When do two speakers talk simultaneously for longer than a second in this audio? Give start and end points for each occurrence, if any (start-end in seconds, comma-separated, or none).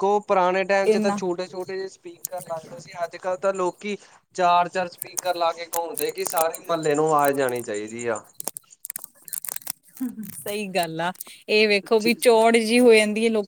none